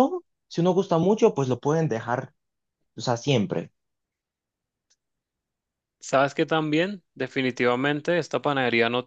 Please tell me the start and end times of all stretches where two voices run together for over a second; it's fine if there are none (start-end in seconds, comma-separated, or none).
none